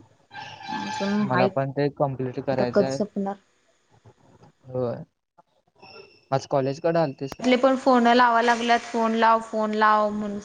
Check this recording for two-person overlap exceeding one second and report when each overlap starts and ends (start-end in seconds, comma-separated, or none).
none